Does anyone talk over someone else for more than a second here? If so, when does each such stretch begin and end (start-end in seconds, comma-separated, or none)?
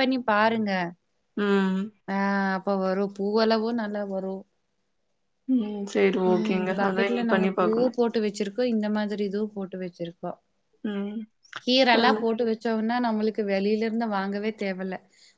6.3-8.0